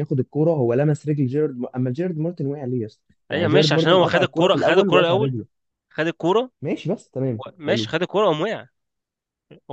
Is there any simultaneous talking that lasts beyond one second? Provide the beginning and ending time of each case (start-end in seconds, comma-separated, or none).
3.3-5.3